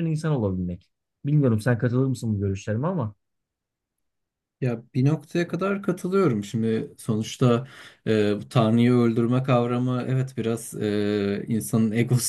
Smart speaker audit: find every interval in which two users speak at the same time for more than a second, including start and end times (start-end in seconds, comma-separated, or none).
none